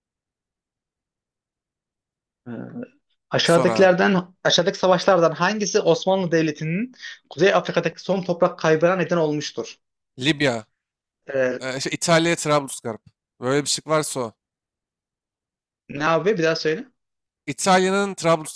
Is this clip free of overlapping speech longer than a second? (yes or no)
yes